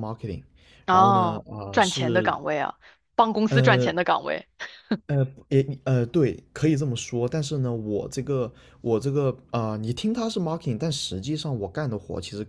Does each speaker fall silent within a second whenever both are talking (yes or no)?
no